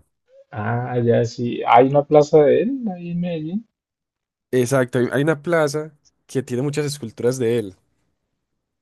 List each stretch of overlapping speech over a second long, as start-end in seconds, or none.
none